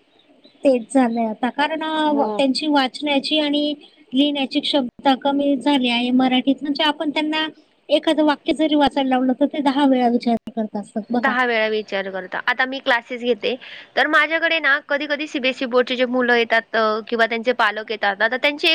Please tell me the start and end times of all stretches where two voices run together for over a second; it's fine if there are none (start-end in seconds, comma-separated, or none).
none